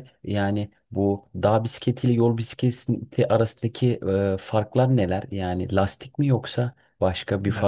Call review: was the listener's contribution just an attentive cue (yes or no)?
no